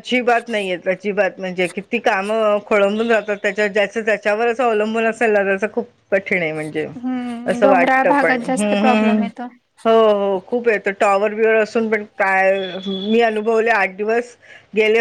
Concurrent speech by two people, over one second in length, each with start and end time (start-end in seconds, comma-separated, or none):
7.5-9.2